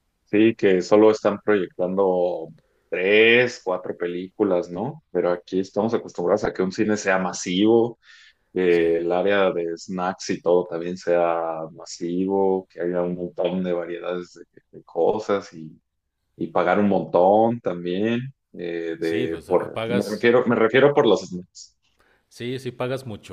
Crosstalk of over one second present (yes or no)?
yes